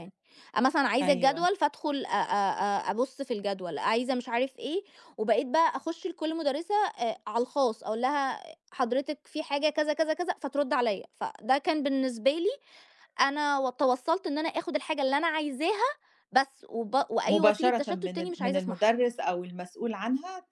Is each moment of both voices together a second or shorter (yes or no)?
no